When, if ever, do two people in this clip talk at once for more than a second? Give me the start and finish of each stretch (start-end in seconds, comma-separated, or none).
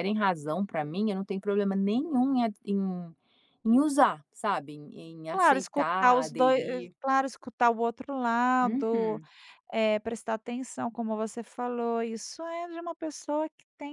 5.3-6.9